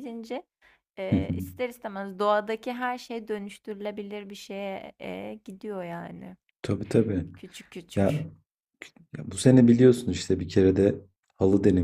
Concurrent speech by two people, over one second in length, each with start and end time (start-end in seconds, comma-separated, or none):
none